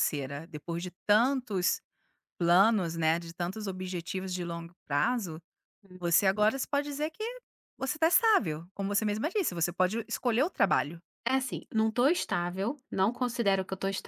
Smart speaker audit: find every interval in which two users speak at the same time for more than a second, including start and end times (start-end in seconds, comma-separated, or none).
none